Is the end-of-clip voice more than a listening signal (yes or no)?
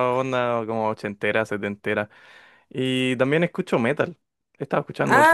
no